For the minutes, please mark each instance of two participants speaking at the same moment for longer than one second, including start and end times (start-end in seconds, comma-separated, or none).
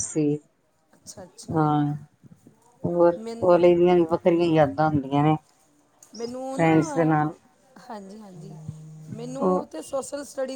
none